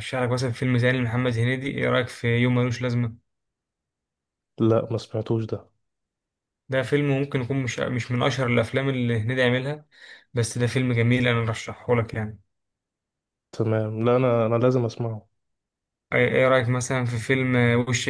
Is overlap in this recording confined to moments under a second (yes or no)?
yes